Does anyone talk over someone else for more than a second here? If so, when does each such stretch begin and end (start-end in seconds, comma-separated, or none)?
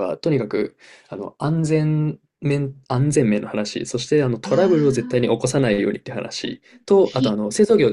4.4-5.6